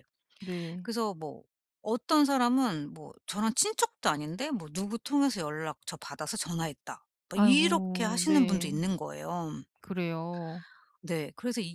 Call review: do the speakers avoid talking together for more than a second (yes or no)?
no